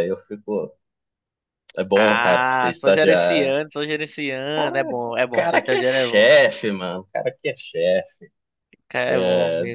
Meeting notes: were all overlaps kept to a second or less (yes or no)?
no